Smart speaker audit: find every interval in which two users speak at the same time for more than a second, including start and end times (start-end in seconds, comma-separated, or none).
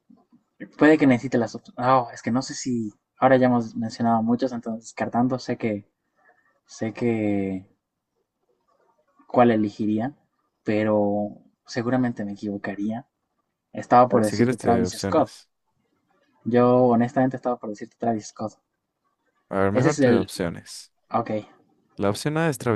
14.1-15.3